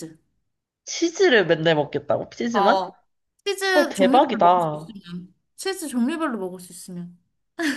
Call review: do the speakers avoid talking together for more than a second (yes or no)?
no